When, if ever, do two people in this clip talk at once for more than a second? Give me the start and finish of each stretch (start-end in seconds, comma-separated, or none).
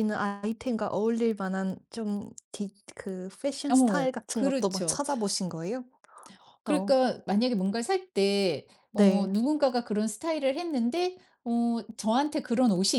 3.7-5.0